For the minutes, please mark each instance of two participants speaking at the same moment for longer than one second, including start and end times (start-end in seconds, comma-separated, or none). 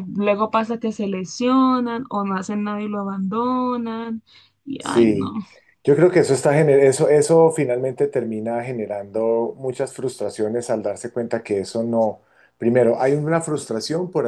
none